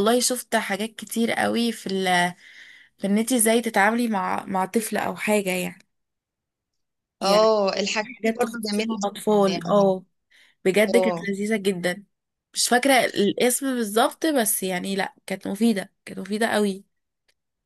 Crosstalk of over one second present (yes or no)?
yes